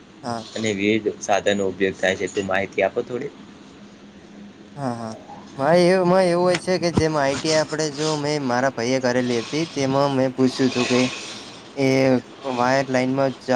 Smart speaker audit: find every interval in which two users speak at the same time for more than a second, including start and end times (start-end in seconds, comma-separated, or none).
none